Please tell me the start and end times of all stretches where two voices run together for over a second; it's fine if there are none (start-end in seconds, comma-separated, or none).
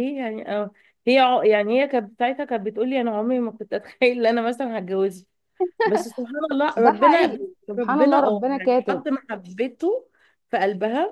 6.8-9.0